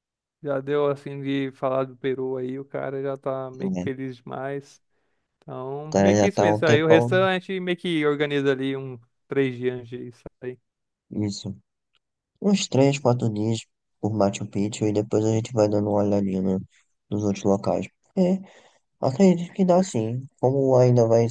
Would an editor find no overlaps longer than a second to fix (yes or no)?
no